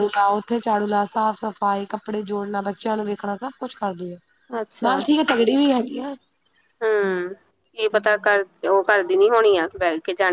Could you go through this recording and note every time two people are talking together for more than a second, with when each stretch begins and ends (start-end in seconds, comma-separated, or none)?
none